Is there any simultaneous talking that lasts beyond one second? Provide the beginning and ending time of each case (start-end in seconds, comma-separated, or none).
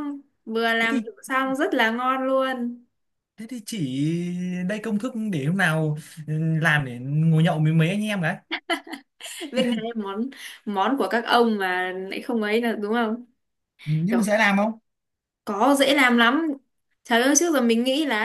none